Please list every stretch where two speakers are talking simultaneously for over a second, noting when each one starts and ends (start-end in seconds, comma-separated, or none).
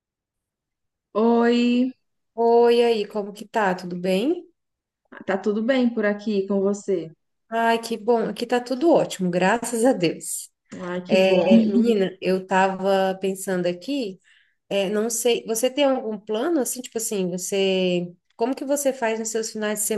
none